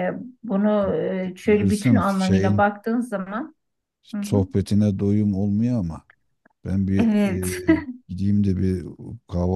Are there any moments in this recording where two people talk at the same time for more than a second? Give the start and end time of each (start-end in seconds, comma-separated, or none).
1.4-2.6